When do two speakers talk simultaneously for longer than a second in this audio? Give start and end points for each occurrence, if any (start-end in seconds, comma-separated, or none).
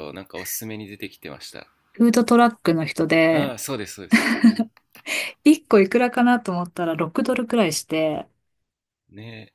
none